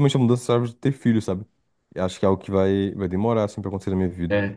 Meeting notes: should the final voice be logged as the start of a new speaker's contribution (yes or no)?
yes